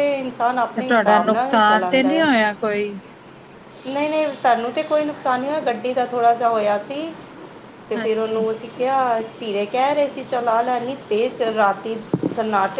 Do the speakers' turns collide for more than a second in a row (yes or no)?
yes